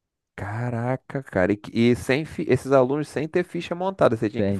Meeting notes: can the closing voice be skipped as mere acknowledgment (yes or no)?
no